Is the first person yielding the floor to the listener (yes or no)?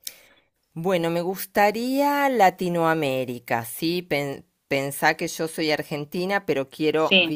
no